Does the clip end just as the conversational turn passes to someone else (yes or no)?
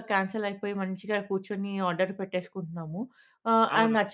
no